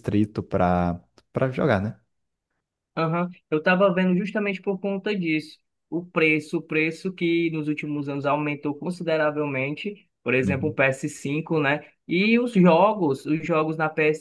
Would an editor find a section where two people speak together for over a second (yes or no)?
no